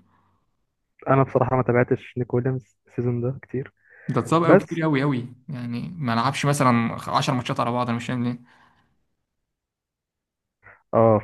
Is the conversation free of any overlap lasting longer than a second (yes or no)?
yes